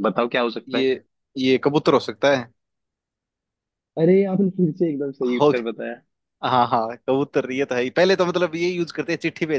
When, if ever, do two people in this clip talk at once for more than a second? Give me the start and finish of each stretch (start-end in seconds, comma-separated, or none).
none